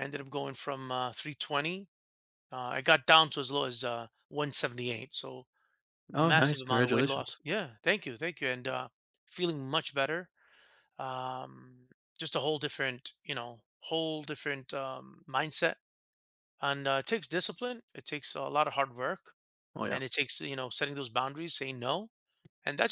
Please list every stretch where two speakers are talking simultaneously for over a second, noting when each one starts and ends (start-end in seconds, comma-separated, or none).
6.2-7.4